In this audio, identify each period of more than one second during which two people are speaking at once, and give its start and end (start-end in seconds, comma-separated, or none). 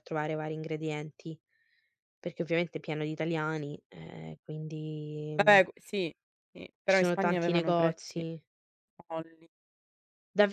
6.9-8.2